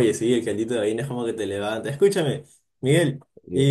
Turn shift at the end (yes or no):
no